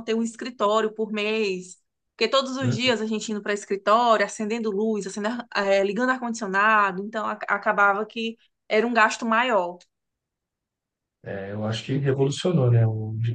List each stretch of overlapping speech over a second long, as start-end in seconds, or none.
none